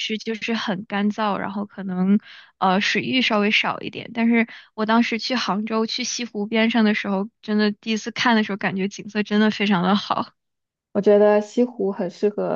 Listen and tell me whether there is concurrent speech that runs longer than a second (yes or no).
no